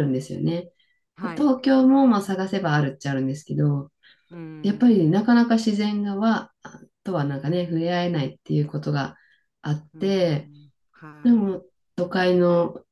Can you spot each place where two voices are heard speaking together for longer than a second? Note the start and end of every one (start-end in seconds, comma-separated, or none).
none